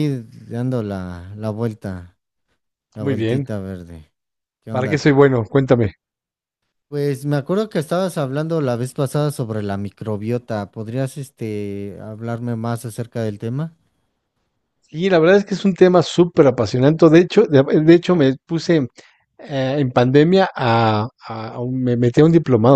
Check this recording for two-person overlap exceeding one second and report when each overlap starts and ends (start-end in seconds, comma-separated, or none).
none